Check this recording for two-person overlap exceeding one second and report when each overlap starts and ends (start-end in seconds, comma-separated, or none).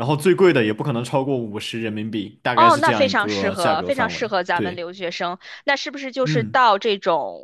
2.5-4.8